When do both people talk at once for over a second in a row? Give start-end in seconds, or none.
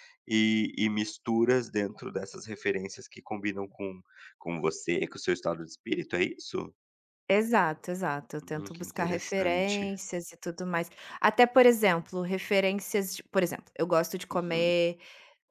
8.4-9.9